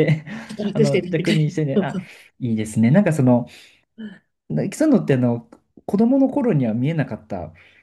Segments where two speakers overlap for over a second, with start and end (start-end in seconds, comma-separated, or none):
0.7-2.0